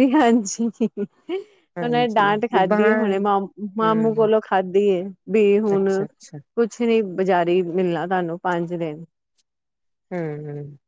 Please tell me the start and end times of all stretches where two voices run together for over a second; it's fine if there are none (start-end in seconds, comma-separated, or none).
1.8-3.2